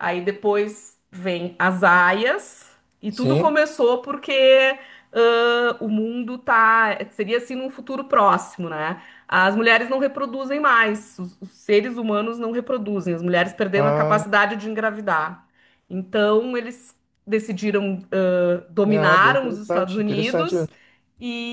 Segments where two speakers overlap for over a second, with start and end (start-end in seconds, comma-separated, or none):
18.9-20.6